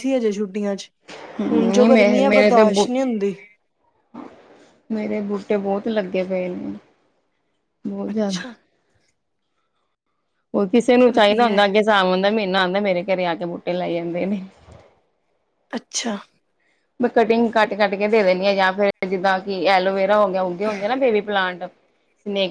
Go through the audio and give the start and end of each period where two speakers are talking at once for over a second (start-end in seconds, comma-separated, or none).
1.5-2.9